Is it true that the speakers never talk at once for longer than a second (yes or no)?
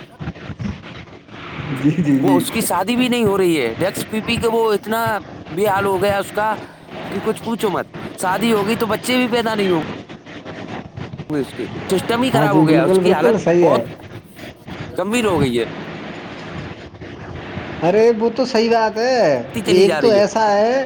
no